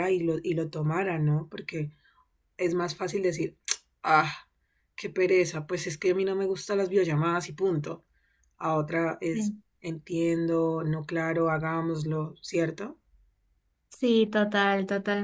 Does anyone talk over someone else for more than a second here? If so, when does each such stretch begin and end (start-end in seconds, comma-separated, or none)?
none